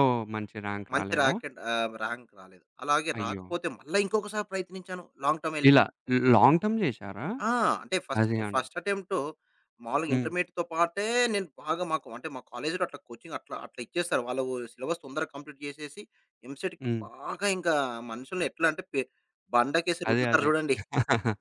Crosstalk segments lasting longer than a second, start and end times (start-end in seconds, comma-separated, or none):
none